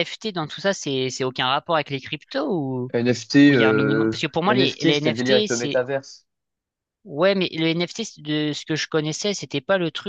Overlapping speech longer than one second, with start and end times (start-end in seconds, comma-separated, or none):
3.5-5.8